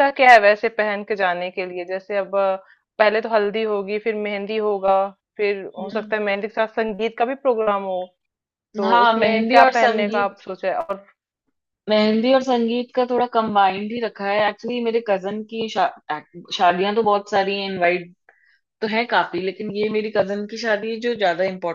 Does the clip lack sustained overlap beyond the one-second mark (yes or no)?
no